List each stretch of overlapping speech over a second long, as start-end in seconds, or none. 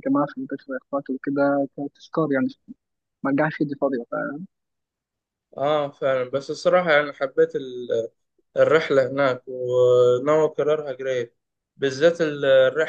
none